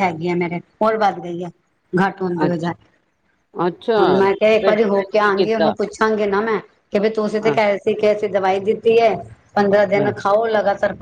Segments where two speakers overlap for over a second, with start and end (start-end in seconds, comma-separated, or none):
4.0-5.7